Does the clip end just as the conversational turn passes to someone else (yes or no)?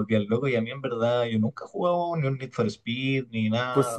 yes